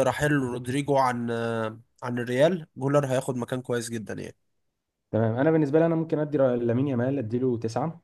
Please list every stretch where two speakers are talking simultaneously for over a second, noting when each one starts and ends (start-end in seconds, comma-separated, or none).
none